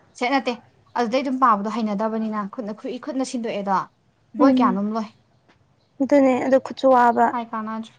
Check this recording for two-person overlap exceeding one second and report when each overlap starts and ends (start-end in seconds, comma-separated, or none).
none